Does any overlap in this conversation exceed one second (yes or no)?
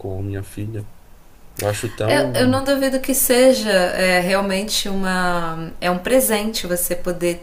no